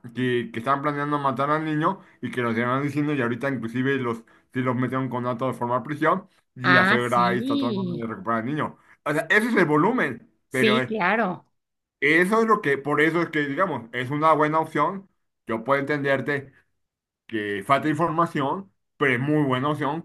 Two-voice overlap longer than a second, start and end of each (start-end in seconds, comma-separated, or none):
6.6-8.1